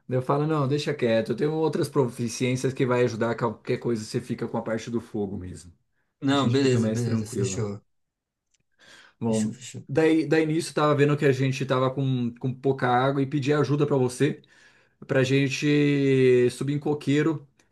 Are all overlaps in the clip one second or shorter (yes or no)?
no